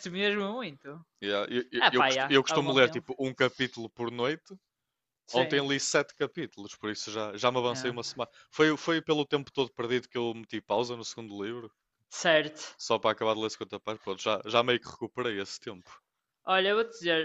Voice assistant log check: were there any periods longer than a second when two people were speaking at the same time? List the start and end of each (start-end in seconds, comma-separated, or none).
1.8-3.1